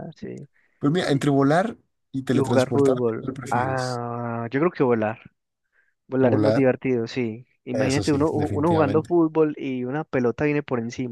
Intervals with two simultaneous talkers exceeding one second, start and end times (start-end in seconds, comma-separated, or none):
2.3-4.0, 7.7-9.1